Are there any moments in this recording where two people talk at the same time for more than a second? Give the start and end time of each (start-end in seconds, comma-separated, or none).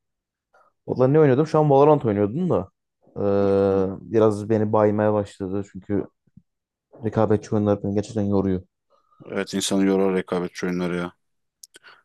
none